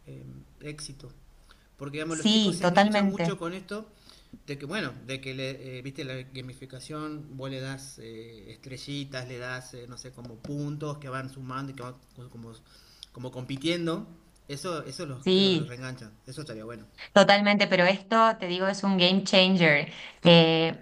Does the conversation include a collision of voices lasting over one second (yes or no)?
yes